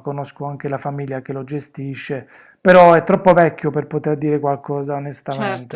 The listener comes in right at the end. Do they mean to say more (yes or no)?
yes